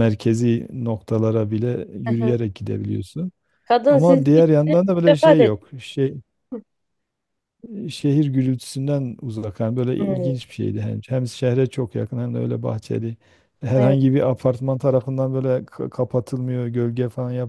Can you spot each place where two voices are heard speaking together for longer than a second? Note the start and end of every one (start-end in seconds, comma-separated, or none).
3.9-5.7